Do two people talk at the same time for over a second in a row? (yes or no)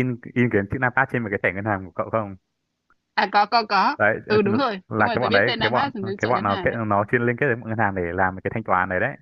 yes